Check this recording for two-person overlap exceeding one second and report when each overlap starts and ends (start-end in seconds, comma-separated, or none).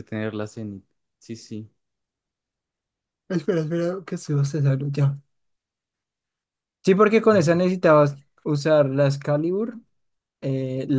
none